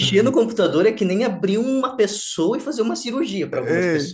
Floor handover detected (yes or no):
yes